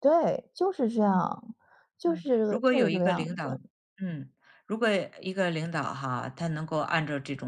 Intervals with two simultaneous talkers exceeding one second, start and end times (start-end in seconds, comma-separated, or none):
2.0-3.6